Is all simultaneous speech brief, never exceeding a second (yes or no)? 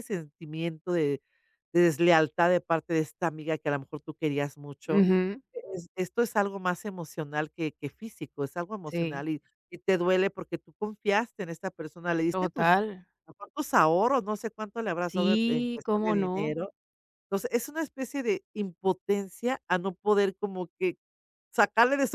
no